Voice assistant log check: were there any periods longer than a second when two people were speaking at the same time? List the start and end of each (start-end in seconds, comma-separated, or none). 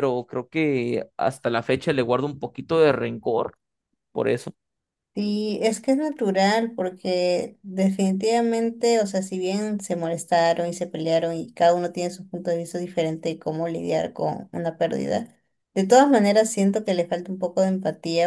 none